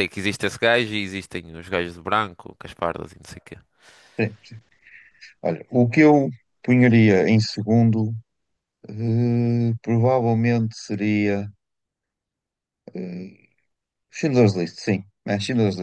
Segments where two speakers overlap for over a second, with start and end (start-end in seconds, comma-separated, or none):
none